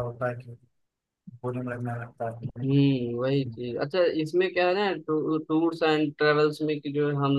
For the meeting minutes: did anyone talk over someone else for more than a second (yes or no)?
no